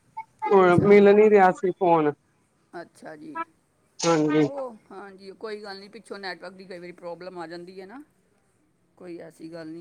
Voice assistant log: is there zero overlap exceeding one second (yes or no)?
yes